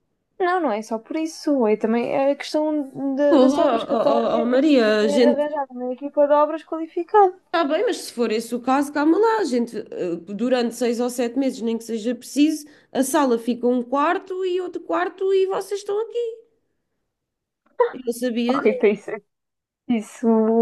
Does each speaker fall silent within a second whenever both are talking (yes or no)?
no